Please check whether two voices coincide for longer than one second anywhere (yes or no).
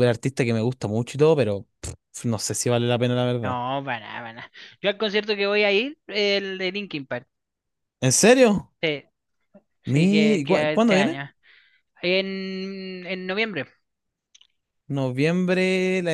yes